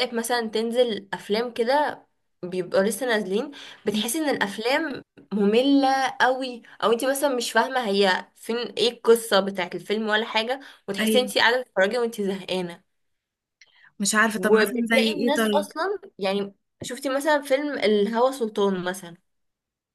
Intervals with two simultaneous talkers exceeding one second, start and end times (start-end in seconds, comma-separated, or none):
14.3-15.7